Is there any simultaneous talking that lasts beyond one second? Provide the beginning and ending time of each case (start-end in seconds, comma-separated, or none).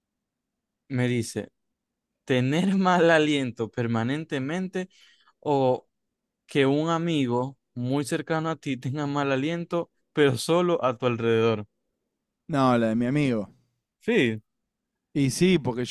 none